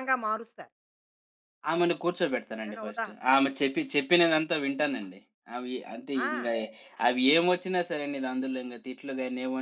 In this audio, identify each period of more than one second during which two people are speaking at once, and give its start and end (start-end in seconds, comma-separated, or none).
none